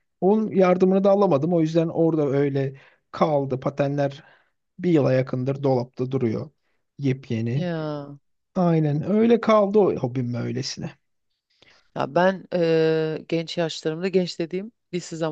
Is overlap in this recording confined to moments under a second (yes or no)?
yes